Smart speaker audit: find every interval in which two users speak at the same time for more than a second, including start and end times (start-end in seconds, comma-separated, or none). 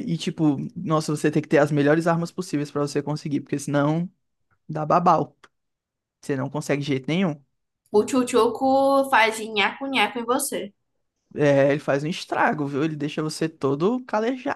none